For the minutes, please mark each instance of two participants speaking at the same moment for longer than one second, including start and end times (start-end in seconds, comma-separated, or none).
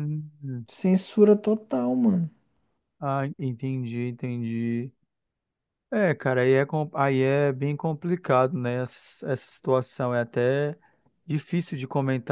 none